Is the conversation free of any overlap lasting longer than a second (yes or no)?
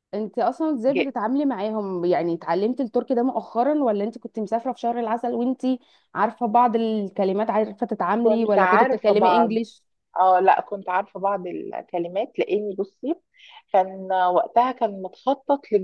no